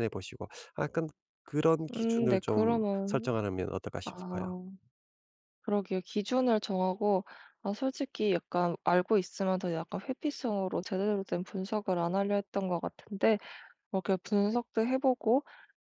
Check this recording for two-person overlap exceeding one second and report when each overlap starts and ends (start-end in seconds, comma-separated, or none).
1.9-3.3